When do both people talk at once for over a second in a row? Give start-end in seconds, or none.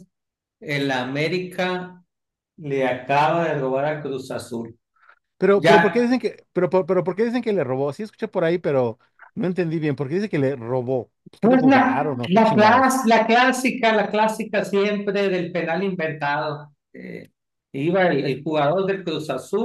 11.4-13.0